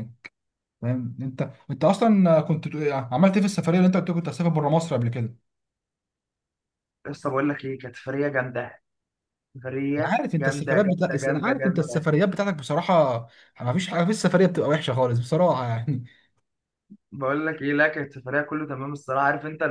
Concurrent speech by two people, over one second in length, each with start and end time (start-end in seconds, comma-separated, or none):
10.0-12.0